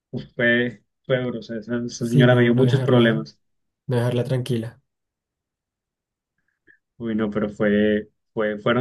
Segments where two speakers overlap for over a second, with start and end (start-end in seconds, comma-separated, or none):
2.0-3.3